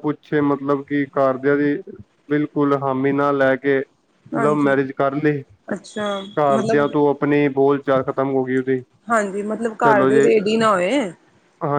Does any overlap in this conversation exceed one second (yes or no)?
no